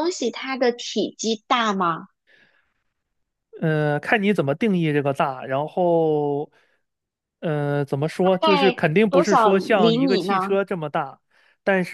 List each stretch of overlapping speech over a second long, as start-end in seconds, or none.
8.2-10.6